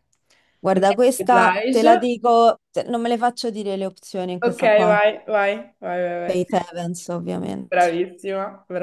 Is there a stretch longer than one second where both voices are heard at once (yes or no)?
yes